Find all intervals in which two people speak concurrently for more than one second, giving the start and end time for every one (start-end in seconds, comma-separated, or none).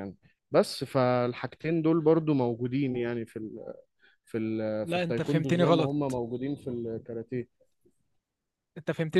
4.8-6.2